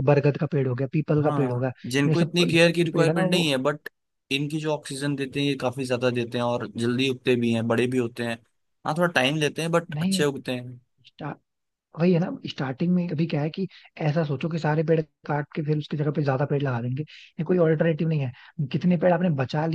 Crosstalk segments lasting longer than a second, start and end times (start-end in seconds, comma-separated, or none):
1.2-3.5